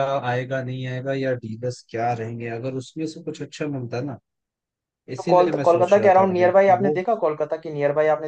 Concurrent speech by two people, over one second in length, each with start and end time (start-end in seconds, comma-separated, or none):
5.2-7.0